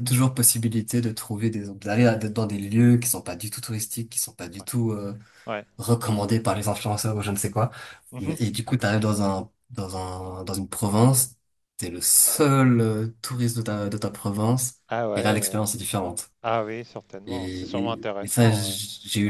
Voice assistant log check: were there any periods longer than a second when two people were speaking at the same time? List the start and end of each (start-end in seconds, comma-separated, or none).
17.3-18.8